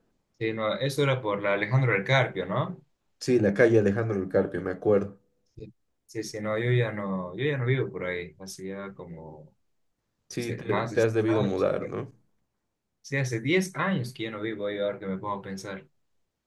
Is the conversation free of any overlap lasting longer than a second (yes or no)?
no